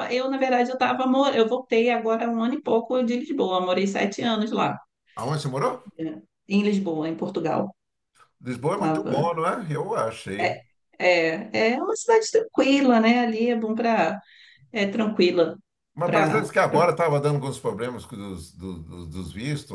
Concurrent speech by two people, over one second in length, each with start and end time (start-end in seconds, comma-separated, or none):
none